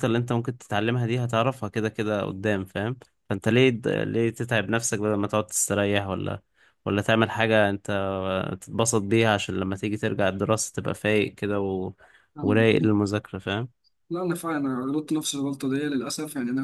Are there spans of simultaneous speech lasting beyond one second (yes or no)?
no